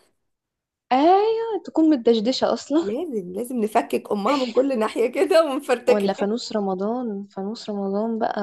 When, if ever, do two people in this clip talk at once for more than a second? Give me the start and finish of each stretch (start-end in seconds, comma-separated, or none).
none